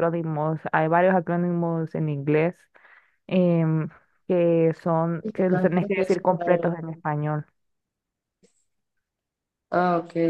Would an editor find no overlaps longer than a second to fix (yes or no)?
no